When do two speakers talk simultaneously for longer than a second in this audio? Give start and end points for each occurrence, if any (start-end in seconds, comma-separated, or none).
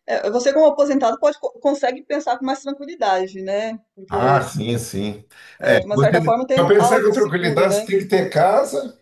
5.9-7.9